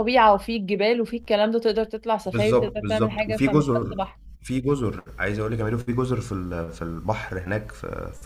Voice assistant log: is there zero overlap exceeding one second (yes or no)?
no